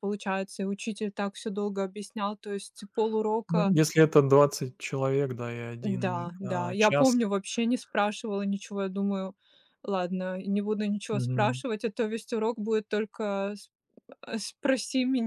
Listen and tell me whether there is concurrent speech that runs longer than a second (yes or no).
yes